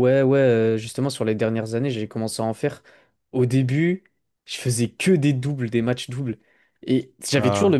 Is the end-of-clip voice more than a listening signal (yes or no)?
no